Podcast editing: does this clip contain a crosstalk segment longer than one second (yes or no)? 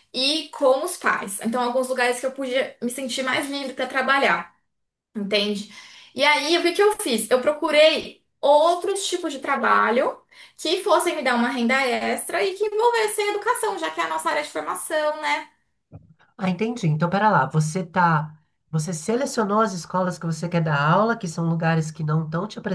no